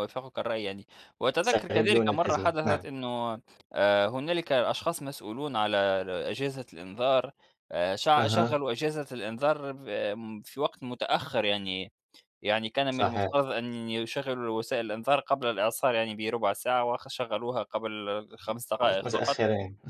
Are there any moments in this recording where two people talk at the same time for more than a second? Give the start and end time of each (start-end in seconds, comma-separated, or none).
1.4-2.9